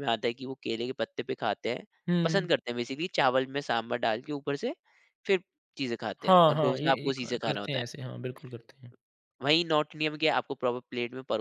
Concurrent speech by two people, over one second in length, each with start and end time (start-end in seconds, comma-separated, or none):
6.2-7.8